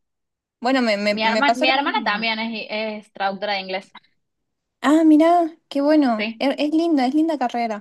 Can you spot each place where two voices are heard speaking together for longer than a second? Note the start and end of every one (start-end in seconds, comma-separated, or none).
1.1-2.3